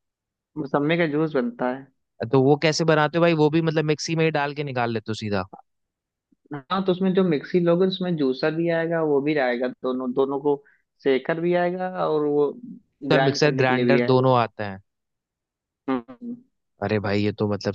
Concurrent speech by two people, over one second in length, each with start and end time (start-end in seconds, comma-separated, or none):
13.1-14.4